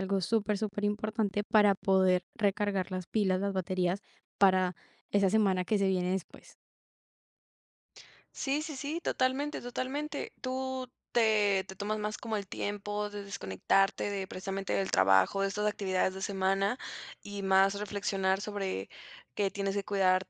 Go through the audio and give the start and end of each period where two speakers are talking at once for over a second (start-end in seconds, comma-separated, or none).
none